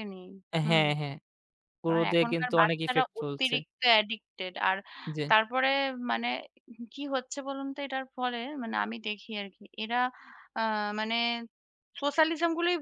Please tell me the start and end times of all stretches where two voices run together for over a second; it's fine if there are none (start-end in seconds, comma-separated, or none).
1.9-3.6